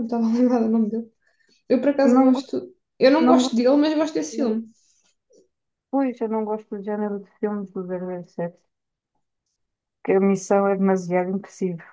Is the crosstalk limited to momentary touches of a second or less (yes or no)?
yes